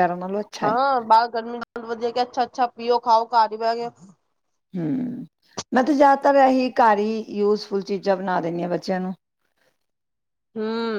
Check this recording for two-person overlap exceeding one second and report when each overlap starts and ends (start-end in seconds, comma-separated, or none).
none